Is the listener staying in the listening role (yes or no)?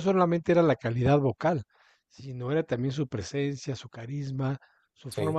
yes